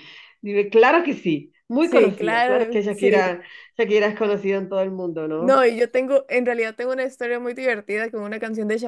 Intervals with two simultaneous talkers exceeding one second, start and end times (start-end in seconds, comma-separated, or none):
1.8-3.1